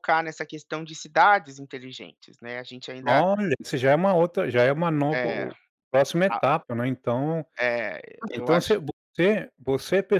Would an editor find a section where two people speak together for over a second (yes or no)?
no